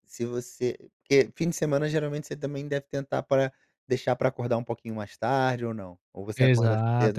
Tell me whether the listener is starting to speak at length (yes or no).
yes